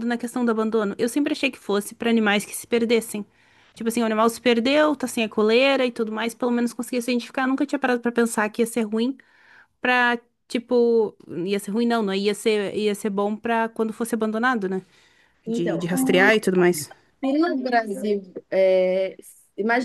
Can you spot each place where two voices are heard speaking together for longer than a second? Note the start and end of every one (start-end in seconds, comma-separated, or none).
none